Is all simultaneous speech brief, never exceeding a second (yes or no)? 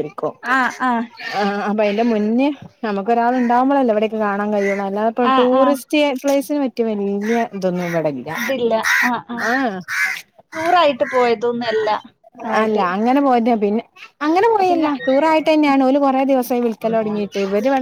yes